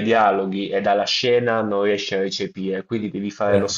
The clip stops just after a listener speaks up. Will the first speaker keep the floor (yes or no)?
yes